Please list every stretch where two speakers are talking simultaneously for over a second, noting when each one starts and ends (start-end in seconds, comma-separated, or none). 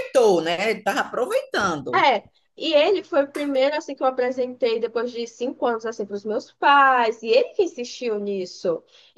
none